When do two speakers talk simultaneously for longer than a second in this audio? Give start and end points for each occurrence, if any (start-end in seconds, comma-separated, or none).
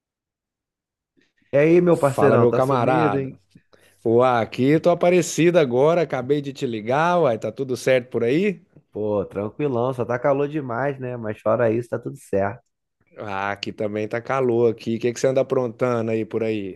1.9-3.3